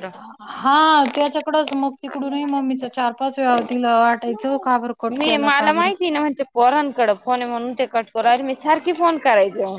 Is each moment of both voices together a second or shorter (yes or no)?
yes